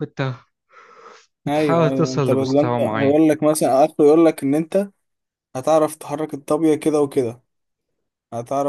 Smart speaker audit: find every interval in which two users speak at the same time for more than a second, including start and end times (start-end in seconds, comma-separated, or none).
1.5-3.2